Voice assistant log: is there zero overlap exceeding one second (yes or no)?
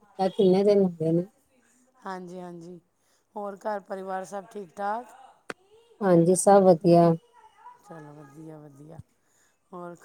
yes